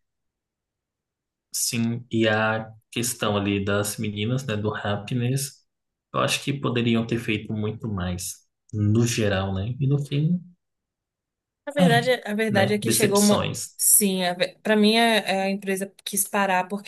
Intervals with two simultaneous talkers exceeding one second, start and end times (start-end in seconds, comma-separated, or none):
11.8-13.8